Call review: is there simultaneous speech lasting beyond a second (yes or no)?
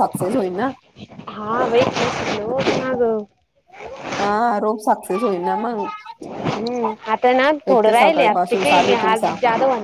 yes